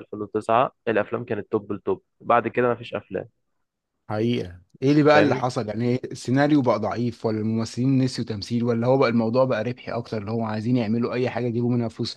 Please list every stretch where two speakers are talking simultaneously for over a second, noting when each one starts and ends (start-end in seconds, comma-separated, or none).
none